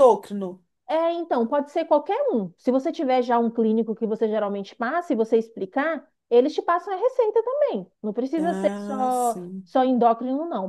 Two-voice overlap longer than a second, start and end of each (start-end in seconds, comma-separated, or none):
8.4-9.7